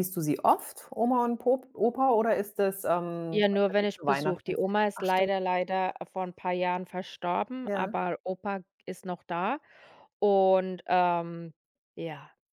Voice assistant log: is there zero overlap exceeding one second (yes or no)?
no